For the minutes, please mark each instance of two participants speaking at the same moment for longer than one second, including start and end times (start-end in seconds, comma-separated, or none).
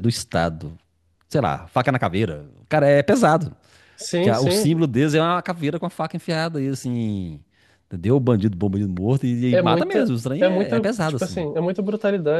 9.5-11.4